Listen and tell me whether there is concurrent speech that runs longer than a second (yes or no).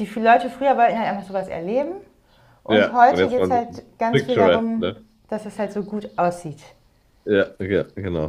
yes